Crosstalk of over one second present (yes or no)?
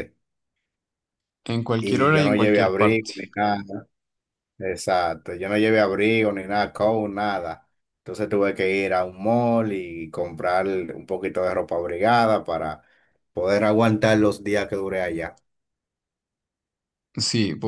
yes